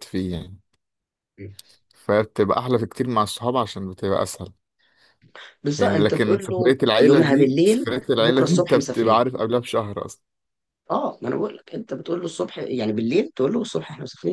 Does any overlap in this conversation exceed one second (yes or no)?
yes